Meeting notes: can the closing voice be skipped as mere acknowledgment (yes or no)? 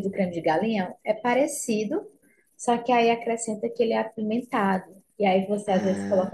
yes